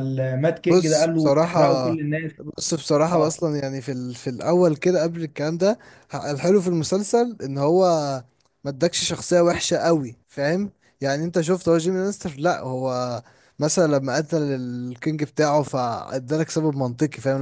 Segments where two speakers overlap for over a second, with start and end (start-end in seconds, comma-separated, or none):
0.7-1.9